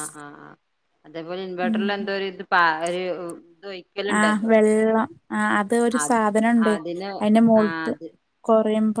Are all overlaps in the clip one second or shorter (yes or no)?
yes